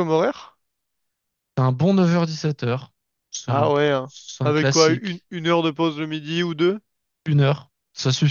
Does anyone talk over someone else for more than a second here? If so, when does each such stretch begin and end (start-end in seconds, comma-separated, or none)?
3.5-5.2